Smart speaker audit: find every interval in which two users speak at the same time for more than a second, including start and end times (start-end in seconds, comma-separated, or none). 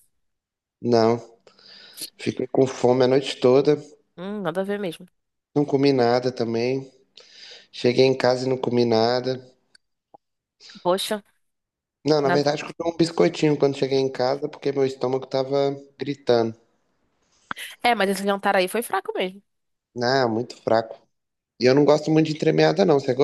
none